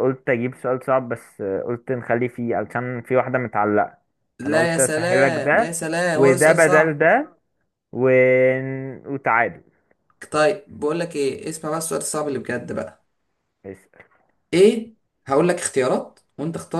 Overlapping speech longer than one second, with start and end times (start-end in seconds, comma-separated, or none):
4.4-7.1